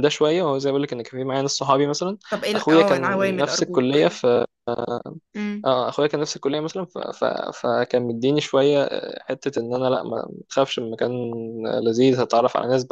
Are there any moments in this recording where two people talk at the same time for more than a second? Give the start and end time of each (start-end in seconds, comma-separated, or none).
2.5-4.1